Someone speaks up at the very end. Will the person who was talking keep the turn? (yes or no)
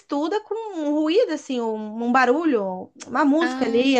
yes